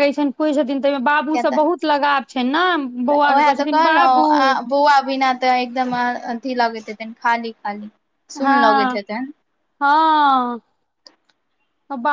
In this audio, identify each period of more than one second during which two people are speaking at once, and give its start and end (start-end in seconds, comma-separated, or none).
none